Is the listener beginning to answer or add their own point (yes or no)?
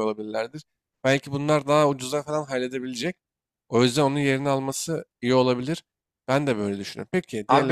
yes